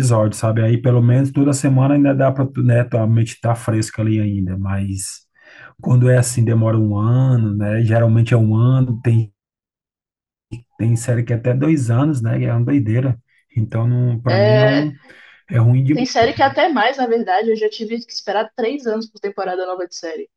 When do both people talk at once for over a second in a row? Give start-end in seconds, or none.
none